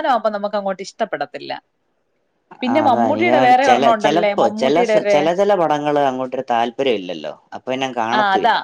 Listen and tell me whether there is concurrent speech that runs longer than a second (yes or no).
yes